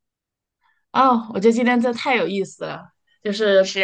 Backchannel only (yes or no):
yes